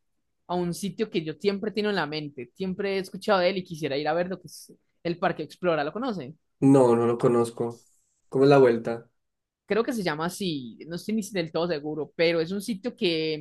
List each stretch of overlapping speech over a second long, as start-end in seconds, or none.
none